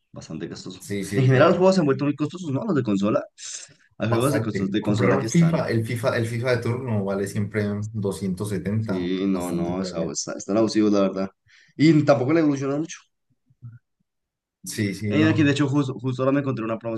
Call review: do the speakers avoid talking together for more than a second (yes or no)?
no